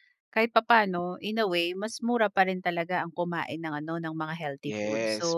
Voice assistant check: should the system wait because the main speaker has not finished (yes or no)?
no